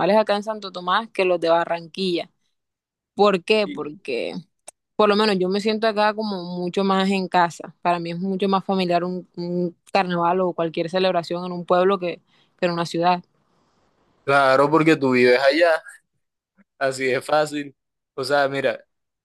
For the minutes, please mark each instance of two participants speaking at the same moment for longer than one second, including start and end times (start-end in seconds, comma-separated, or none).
none